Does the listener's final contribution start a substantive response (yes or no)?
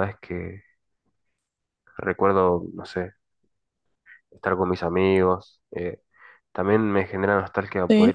no